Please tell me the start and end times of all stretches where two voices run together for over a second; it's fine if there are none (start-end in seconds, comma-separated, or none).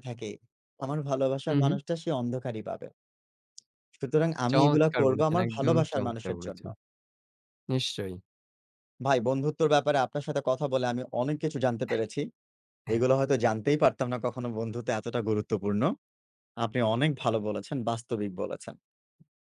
4.5-6.6